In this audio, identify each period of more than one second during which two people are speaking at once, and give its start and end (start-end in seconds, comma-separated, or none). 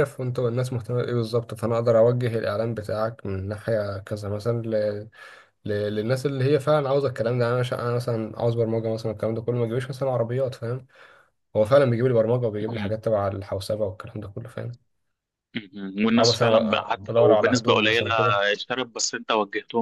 16.2-18.1